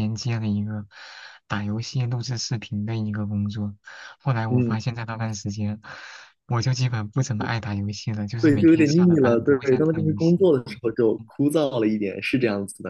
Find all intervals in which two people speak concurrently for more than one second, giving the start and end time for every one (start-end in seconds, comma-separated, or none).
8.4-10.5